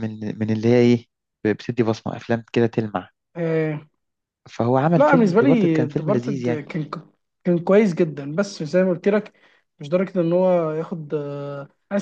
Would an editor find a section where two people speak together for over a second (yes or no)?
yes